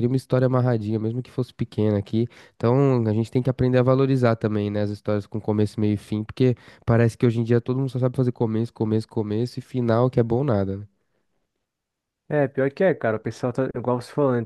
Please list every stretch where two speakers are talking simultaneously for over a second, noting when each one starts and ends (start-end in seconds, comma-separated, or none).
none